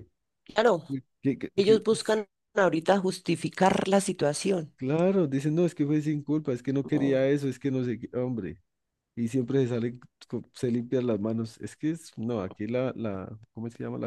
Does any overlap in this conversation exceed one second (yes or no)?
no